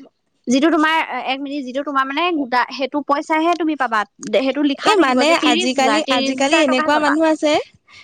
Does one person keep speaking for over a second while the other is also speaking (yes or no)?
yes